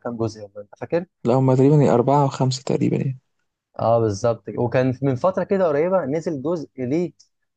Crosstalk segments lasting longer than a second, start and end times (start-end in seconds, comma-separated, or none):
none